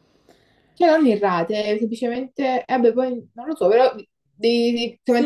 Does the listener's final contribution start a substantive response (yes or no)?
yes